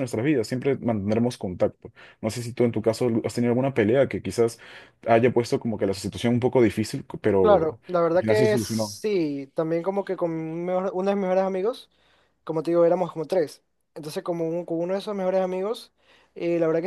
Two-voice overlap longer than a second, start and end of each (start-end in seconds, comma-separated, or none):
7.4-9.0